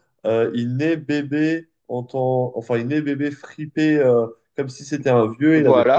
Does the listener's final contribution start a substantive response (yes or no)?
no